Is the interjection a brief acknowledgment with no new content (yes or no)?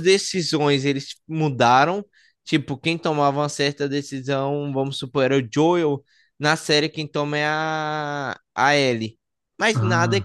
yes